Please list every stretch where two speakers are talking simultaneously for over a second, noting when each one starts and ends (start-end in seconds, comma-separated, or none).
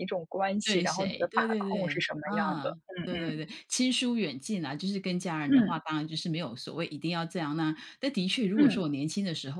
0.6-3.4